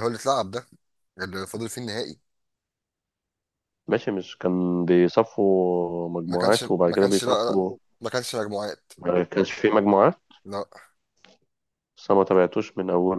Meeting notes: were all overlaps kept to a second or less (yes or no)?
no